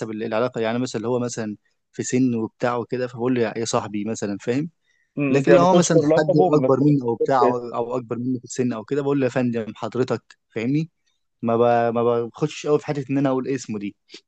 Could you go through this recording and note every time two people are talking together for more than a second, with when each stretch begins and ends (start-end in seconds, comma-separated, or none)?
5.3-7.8